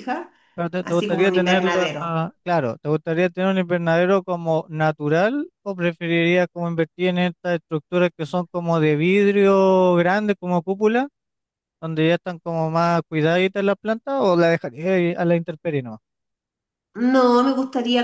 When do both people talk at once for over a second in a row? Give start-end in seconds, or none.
0.8-2.2